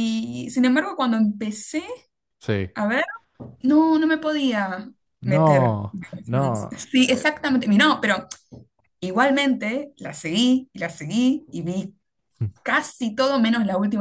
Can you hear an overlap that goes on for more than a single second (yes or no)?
yes